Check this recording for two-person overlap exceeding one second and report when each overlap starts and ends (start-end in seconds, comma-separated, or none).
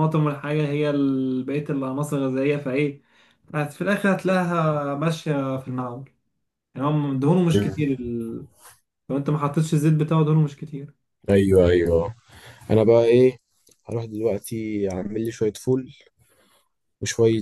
none